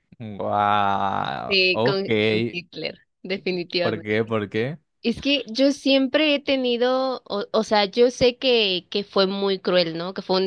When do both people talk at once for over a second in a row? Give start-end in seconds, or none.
none